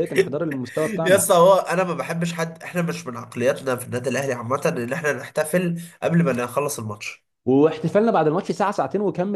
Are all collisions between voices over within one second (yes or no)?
yes